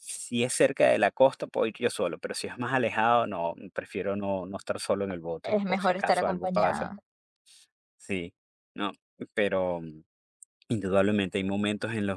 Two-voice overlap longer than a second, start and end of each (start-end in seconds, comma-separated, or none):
5.4-6.9